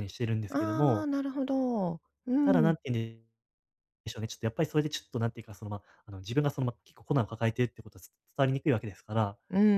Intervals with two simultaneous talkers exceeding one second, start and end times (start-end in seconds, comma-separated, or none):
none